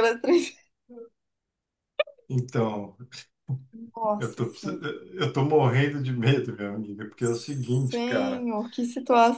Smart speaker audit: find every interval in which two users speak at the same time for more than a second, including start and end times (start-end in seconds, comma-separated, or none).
7.2-8.5